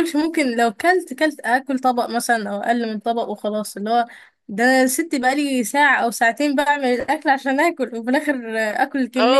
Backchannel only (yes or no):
no